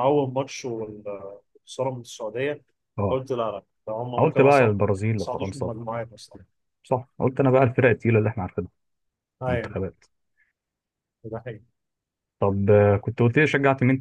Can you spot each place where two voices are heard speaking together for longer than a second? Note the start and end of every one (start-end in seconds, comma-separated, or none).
4.2-5.7